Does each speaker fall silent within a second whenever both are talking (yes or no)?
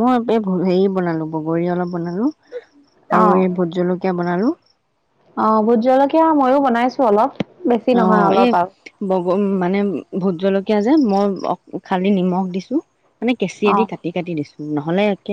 yes